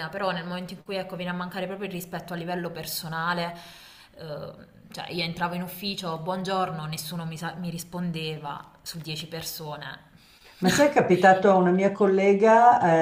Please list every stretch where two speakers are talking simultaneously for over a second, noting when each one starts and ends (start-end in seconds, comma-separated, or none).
none